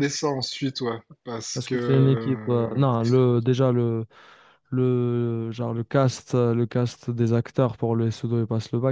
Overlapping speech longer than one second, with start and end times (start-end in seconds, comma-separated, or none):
1.5-2.9